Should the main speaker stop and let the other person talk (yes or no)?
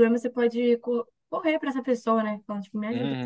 yes